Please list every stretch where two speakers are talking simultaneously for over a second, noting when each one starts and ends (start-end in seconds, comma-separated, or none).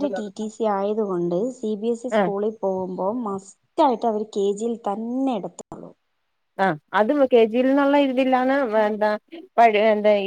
none